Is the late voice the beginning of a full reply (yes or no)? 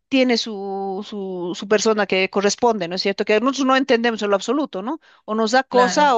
no